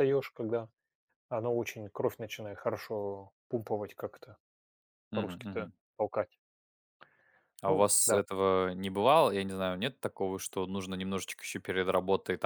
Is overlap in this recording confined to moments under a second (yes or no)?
yes